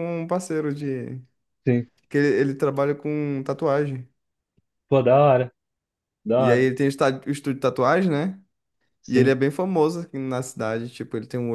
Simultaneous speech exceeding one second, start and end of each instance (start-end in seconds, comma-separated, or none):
none